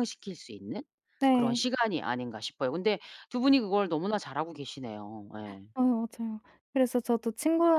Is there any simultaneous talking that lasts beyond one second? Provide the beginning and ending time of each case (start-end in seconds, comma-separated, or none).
none